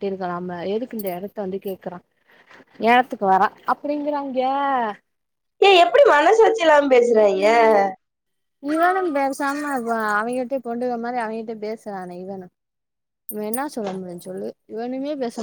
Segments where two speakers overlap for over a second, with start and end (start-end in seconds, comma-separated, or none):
none